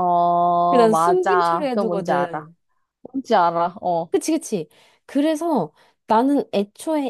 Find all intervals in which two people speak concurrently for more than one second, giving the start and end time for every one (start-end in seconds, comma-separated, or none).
0.7-2.5